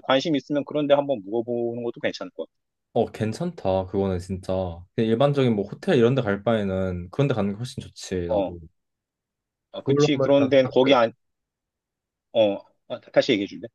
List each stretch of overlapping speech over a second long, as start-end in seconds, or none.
9.7-10.9